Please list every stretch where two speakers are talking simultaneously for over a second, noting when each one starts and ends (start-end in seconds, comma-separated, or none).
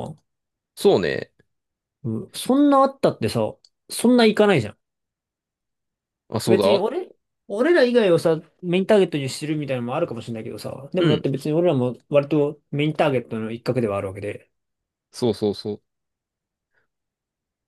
none